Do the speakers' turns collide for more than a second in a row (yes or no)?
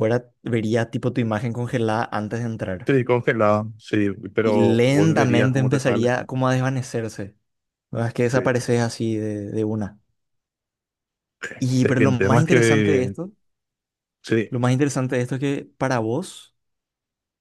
yes